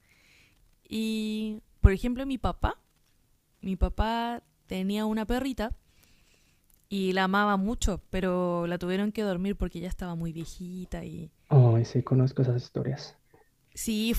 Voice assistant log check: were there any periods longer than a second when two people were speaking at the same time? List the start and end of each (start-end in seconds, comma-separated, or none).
none